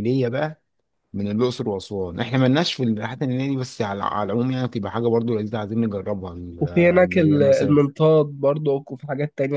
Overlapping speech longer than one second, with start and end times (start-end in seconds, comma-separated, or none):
6.6-7.8